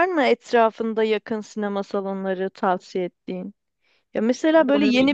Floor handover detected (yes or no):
no